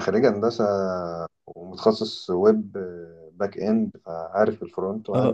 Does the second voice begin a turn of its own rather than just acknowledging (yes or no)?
yes